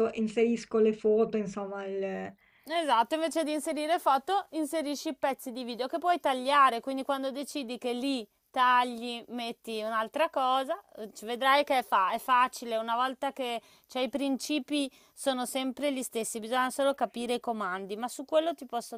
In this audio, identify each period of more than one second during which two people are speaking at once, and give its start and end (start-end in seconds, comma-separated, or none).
none